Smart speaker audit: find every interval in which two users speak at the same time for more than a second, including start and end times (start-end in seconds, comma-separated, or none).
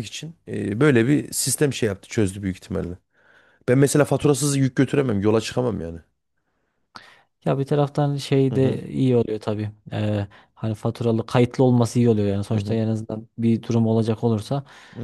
none